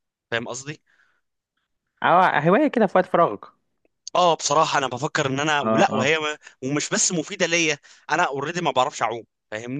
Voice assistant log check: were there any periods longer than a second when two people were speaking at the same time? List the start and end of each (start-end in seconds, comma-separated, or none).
none